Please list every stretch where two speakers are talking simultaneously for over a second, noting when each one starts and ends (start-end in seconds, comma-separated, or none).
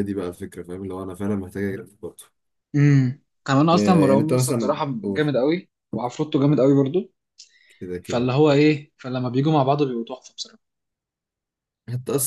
3.7-5.3